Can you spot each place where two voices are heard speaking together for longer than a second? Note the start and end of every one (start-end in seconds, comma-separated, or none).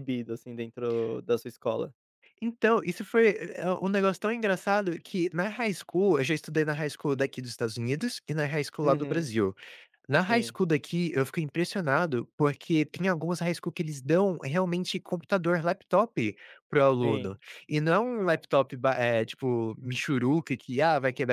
none